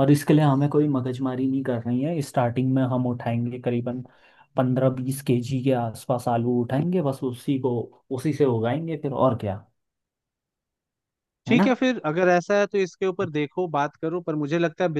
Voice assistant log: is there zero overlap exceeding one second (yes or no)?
yes